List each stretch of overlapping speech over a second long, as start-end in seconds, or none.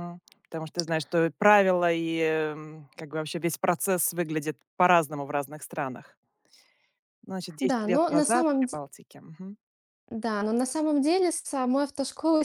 7.6-8.8